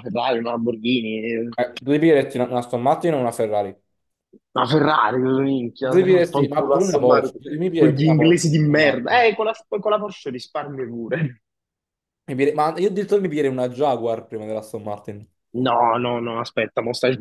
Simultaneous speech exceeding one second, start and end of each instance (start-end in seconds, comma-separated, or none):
5.9-9.3